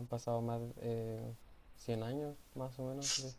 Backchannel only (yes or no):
no